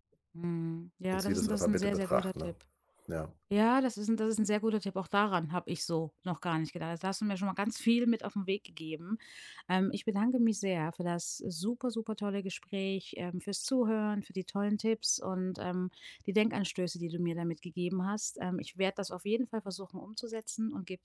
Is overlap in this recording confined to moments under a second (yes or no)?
no